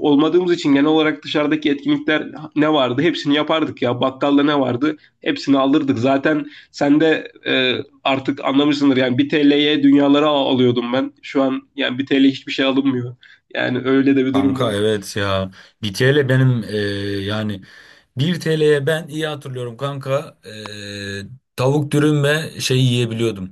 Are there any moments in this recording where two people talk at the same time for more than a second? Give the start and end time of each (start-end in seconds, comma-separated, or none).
none